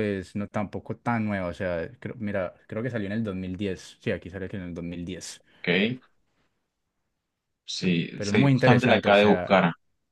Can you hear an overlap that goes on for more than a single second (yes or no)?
yes